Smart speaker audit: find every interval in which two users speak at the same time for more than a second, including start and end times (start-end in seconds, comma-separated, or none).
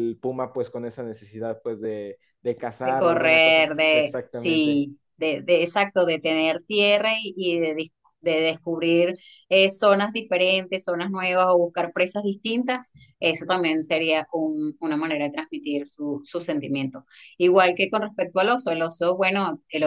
2.8-4.9